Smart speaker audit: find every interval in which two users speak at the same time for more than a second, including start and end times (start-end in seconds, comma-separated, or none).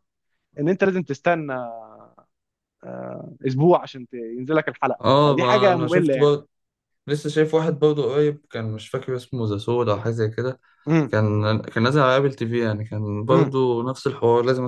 5.0-6.3